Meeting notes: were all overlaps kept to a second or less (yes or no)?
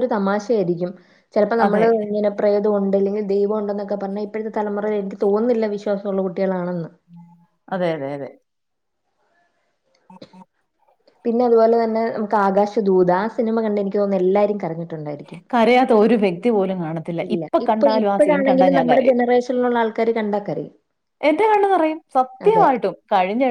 no